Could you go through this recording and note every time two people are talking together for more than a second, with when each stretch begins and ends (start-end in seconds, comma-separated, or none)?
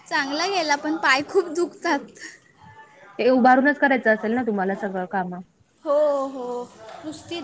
none